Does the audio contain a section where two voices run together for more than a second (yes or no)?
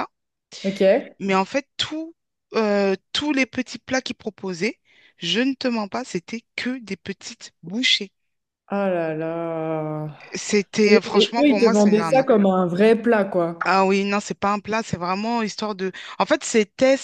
yes